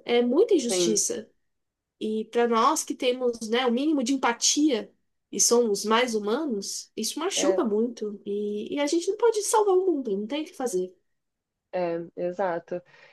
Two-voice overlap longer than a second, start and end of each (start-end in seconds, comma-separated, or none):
none